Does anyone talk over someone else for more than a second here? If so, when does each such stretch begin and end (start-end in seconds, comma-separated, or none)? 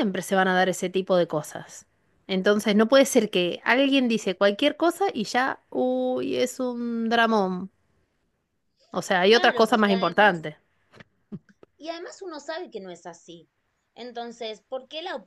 9.2-10.5